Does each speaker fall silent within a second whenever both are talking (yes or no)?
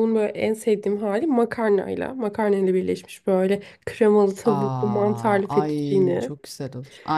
no